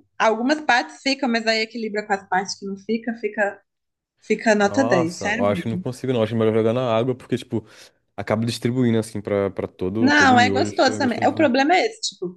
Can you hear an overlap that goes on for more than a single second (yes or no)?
yes